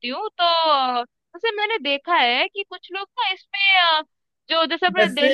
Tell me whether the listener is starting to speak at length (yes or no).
no